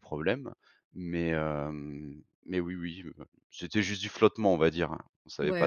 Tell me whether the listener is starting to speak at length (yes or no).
yes